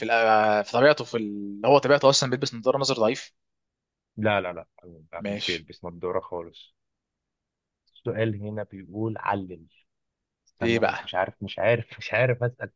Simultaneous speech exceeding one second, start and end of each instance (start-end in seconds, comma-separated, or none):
none